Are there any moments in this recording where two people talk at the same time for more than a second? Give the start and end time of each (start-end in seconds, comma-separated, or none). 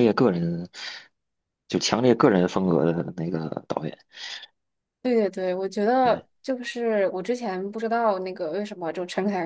none